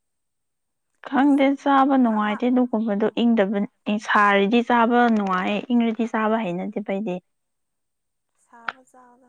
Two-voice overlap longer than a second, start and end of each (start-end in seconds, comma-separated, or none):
none